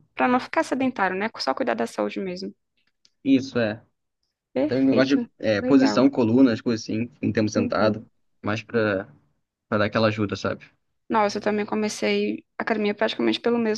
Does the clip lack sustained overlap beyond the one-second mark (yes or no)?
no